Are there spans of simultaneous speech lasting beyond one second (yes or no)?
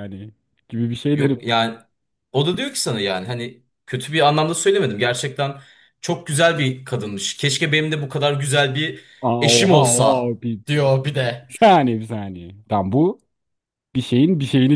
yes